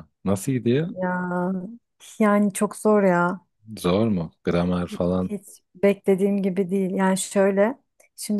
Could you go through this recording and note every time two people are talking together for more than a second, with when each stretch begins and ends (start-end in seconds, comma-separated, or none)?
none